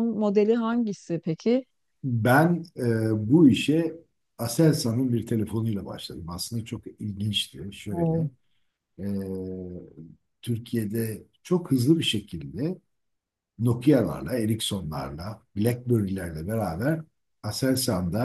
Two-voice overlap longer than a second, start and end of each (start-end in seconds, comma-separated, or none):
none